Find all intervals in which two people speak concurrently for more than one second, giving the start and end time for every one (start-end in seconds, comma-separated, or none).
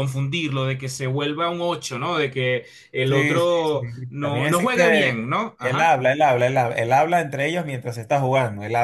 3.0-5.9